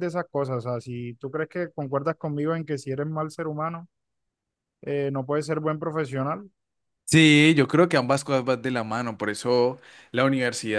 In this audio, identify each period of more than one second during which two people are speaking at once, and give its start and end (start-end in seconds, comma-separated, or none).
none